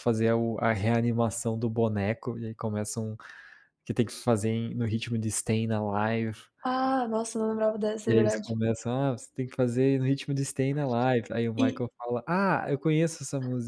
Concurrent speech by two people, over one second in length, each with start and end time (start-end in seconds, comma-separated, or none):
none